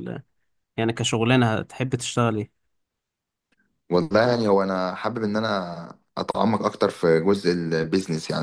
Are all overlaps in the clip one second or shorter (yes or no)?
yes